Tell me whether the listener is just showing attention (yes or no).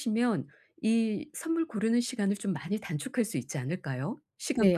no